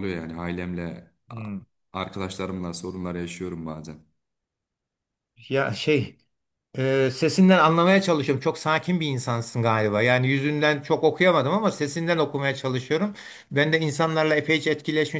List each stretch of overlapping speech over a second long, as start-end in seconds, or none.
none